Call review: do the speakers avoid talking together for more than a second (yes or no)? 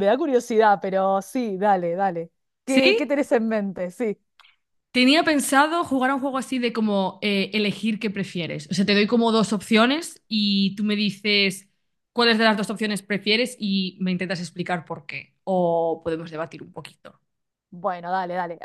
yes